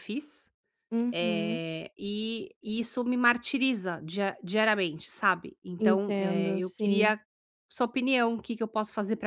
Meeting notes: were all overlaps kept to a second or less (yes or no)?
no